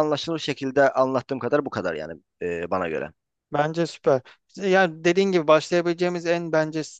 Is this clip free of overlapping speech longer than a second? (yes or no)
yes